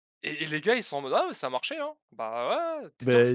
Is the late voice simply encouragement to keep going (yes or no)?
yes